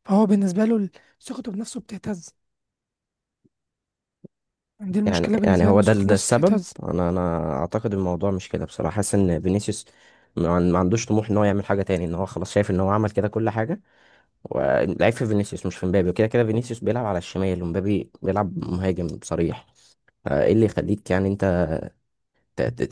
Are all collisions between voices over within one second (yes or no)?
no